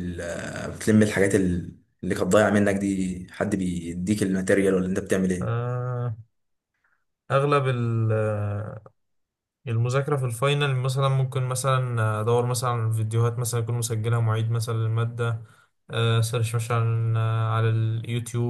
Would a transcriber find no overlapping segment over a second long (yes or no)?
yes